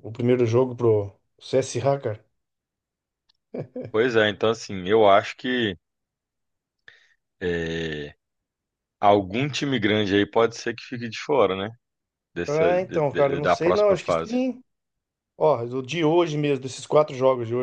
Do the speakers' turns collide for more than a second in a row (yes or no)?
yes